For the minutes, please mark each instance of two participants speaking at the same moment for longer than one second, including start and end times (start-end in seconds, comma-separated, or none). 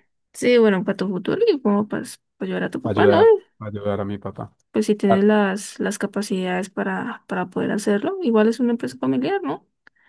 none